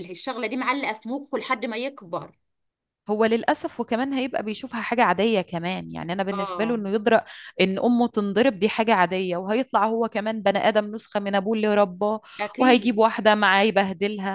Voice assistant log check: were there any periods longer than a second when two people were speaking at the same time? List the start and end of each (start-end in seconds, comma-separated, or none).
none